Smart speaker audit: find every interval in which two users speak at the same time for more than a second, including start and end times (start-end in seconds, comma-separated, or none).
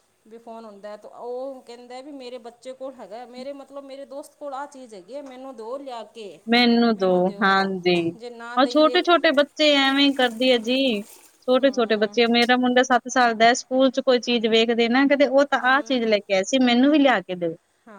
none